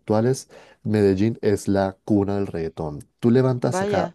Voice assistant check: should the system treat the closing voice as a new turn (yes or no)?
no